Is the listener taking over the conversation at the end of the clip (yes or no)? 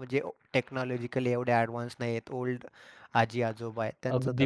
yes